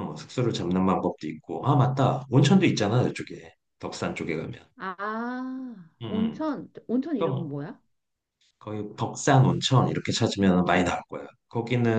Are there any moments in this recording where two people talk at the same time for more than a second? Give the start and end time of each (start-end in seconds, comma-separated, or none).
none